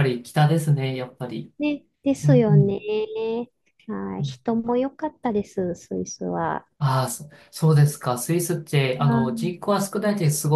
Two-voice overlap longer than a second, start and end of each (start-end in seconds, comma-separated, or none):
none